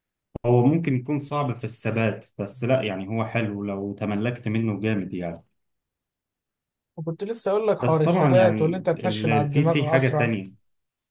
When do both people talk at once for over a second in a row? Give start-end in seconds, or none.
7.8-10.3